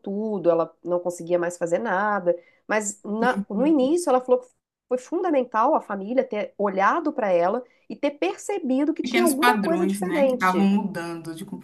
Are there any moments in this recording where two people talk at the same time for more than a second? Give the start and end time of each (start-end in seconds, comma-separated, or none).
9.0-10.7